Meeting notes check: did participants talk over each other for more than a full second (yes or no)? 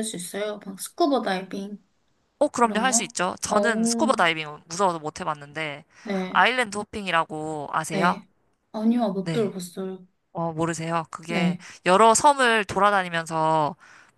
yes